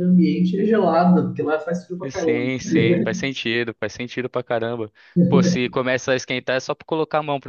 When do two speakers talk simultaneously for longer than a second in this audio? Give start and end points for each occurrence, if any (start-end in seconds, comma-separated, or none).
2.1-3.3